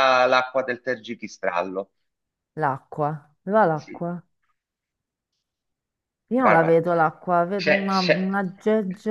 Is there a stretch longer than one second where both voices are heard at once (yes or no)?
no